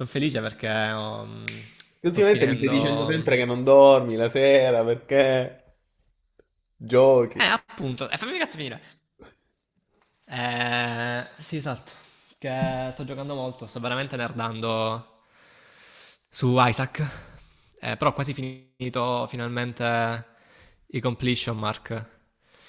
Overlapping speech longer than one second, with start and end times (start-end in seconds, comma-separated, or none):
2.0-3.3